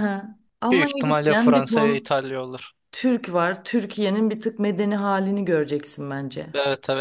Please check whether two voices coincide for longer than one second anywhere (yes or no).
yes